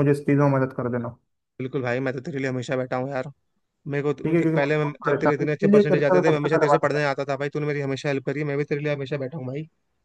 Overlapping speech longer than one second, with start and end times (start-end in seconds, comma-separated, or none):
4.2-7.0